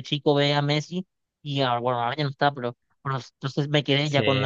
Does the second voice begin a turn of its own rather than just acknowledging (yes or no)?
no